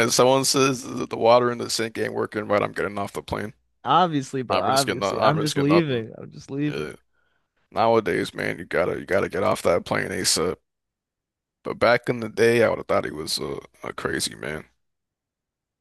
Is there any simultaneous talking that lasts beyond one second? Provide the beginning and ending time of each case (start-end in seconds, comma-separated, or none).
4.5-6.0